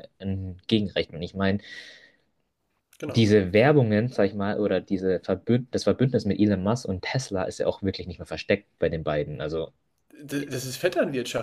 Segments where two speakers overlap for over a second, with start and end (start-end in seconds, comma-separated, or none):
none